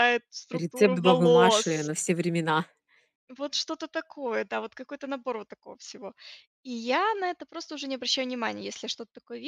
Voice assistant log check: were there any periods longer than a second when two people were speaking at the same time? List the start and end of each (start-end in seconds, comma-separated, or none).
0.6-1.9